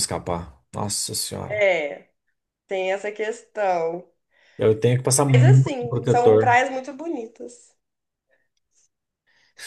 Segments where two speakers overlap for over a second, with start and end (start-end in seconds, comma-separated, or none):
5.3-6.6